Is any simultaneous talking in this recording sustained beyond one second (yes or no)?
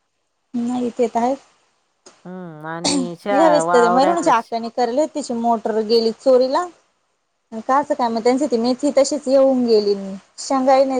yes